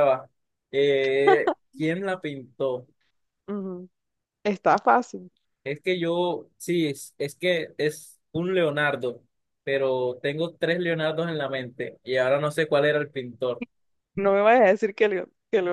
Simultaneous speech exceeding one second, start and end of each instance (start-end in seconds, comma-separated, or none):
none